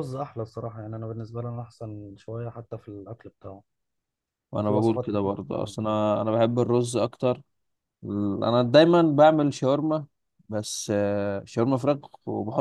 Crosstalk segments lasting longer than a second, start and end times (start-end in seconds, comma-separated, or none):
4.6-6.0